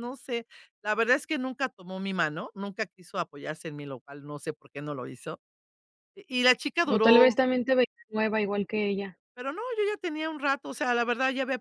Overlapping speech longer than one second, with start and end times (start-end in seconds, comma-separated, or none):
none